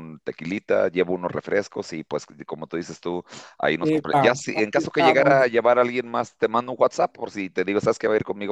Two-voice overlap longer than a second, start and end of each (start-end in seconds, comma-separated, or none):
3.8-5.4